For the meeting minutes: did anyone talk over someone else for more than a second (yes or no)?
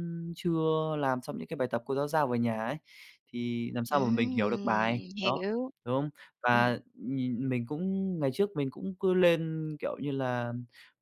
yes